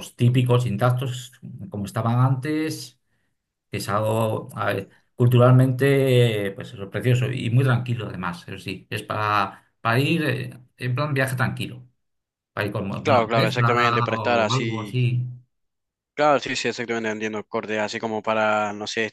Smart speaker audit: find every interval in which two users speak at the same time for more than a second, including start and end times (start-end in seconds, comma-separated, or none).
13.0-15.0